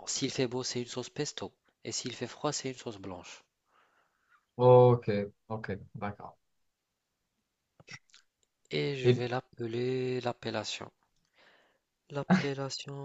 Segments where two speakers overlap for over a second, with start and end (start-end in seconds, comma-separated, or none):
none